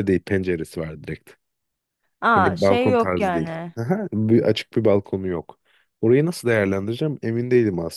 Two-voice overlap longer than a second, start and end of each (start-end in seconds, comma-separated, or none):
2.3-3.7